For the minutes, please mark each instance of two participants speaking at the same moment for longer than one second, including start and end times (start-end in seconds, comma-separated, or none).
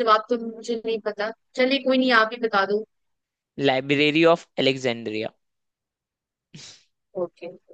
none